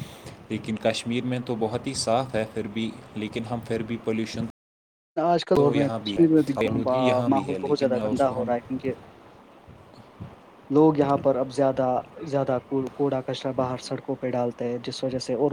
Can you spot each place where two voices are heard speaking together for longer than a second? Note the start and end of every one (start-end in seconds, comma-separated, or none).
5.6-8.5